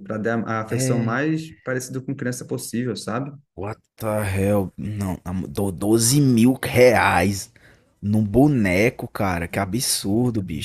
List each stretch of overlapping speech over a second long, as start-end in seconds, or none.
none